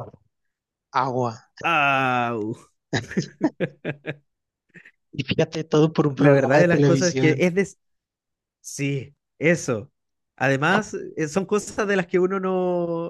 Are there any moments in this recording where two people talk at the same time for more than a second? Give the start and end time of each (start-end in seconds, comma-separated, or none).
6.2-7.5